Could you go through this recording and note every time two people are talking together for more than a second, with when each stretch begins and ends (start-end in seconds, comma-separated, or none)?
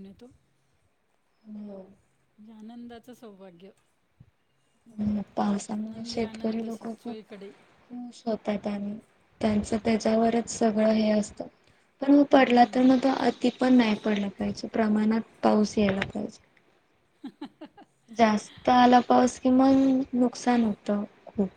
5.4-7.2